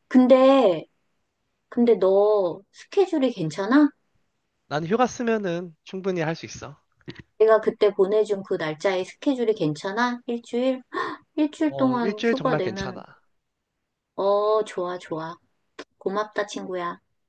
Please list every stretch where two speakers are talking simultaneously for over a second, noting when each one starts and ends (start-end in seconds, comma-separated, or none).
11.7-13.0